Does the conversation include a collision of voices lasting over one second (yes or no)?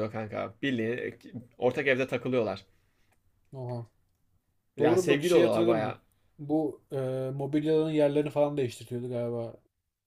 yes